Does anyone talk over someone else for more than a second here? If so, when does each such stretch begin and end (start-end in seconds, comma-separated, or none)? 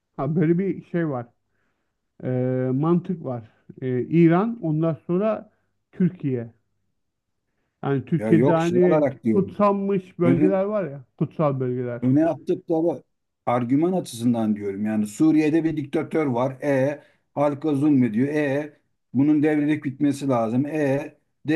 8.1-9.6